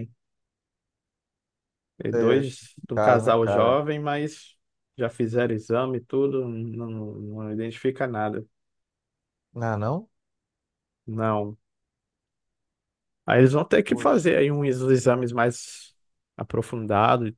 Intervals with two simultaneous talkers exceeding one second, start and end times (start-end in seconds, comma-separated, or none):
2.1-3.8